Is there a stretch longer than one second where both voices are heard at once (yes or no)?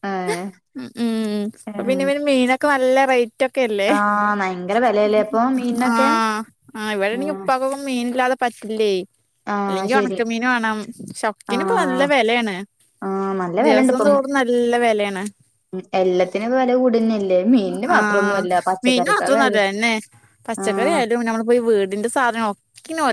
no